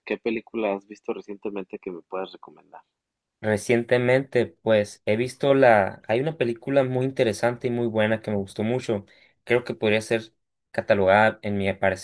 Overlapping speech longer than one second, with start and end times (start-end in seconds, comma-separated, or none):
none